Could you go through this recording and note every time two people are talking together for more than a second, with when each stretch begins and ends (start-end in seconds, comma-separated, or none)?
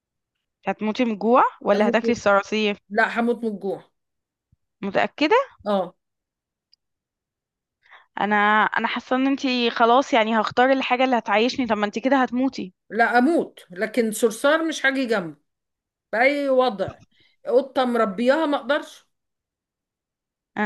none